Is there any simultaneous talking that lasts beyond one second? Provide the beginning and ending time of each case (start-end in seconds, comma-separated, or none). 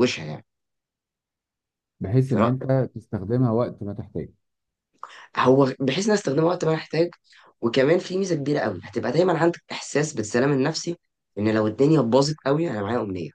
none